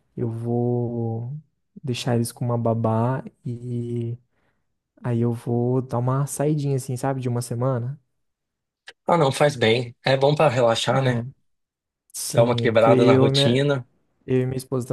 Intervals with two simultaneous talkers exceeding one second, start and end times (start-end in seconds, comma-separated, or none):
12.3-13.6